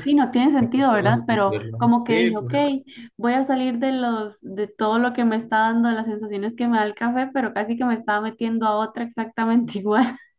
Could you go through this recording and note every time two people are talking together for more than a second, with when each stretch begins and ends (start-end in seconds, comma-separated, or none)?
0.9-2.5